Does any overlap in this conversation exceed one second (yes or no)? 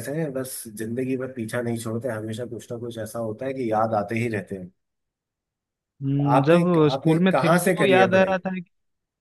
yes